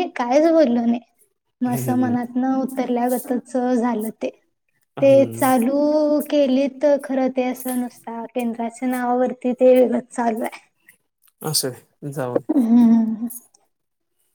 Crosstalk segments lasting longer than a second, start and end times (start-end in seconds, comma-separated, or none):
none